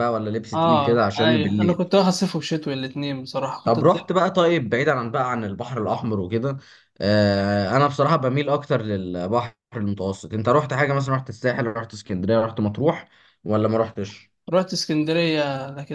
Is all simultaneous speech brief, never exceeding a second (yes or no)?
no